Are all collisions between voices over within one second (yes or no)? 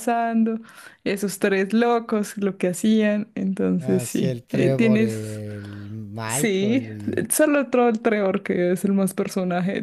no